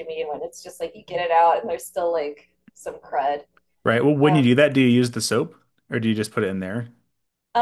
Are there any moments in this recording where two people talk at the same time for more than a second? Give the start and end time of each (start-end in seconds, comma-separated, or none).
none